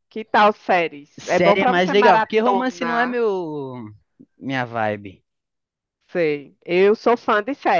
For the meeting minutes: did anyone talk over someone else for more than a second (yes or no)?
yes